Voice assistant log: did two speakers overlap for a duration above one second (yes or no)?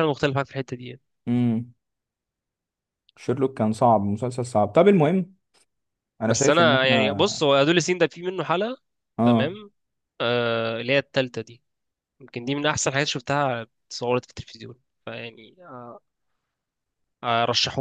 yes